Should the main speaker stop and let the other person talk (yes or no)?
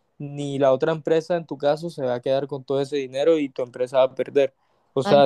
yes